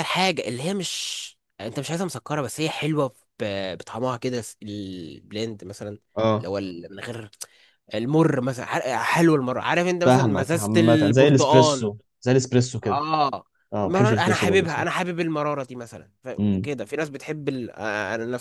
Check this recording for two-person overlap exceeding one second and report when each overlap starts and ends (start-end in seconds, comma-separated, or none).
10.1-11.9, 13.8-15.1